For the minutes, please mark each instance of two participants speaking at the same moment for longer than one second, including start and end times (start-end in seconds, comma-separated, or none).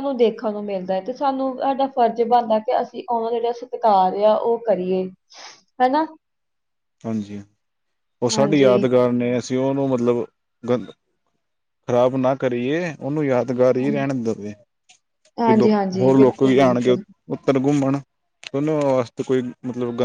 15.4-17.0